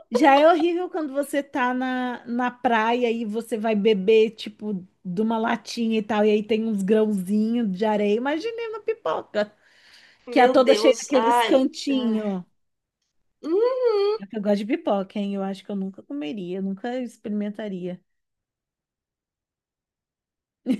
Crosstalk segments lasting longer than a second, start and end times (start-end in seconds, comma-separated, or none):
10.3-12.3